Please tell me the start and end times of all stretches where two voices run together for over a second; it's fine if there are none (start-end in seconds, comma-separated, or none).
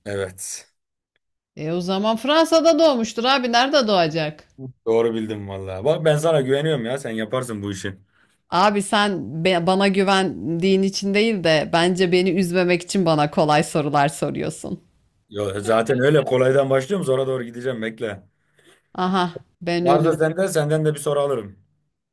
none